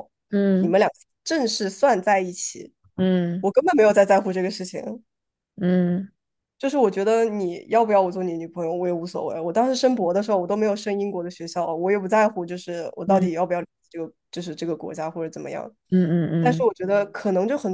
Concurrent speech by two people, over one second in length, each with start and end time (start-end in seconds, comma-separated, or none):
none